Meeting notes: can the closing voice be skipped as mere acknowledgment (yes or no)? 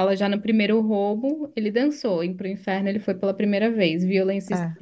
yes